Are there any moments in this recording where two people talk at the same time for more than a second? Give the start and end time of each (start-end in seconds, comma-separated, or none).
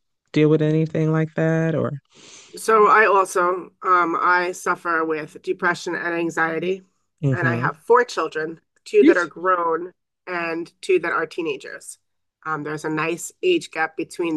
none